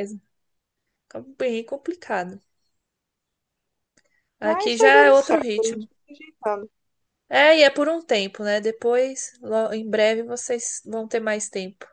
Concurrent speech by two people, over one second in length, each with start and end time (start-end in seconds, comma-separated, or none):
4.4-5.9